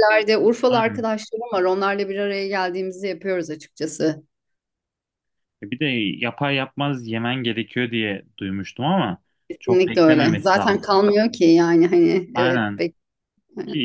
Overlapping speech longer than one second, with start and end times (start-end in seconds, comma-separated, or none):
9.6-11.0